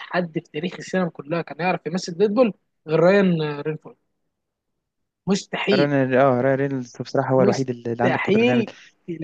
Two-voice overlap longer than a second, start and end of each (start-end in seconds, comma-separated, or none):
7.4-8.7